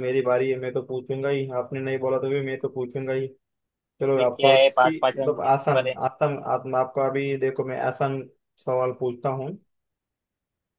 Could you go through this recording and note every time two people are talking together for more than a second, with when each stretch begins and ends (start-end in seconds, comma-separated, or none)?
4.0-6.0